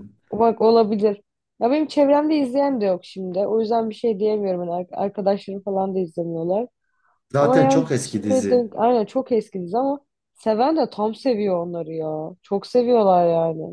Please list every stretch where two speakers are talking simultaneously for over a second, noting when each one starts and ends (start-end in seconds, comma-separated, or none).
7.4-8.7